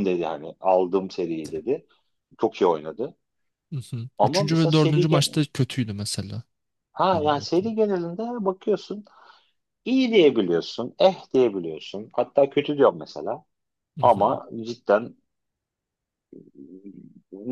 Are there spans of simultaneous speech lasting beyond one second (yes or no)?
yes